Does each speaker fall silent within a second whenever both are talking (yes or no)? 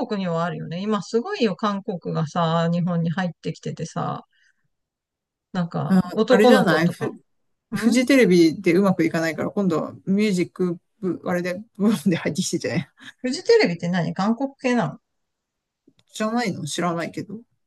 no